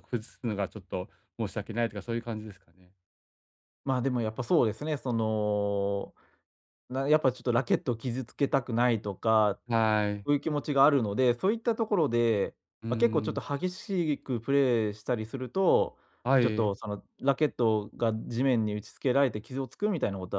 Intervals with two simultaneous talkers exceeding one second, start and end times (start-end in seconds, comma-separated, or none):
none